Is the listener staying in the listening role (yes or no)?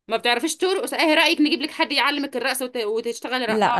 no